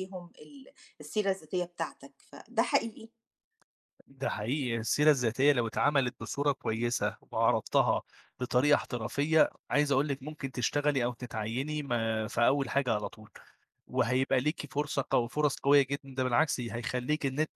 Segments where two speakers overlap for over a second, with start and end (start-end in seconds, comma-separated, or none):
none